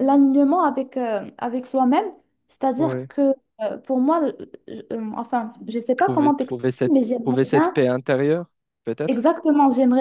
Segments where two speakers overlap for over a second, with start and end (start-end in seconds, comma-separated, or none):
6.0-7.8